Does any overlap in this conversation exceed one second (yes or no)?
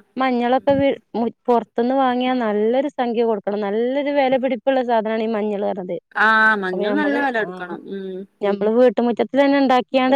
no